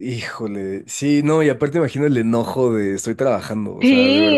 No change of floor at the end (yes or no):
no